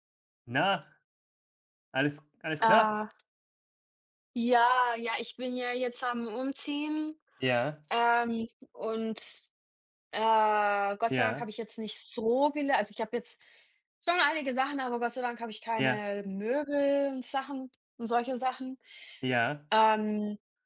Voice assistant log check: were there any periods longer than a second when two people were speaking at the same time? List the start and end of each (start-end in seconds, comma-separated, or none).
none